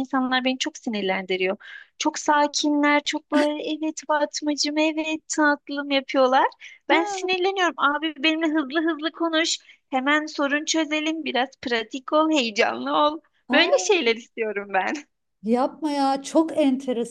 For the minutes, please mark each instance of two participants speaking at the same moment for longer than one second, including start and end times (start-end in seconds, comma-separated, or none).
none